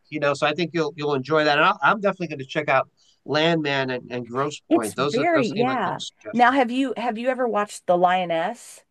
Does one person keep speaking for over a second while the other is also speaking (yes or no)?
yes